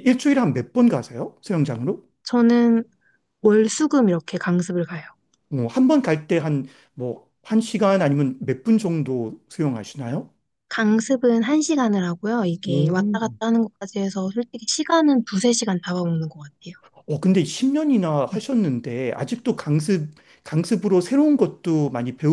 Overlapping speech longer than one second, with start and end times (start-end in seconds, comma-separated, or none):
none